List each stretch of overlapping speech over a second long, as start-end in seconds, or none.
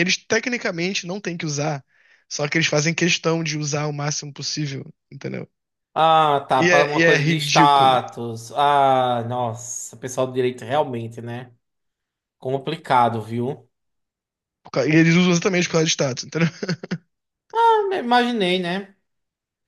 6.6-8.0